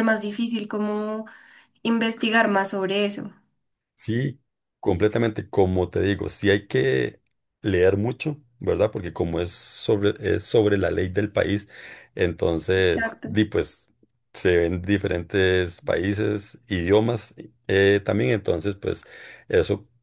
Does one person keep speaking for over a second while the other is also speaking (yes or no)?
no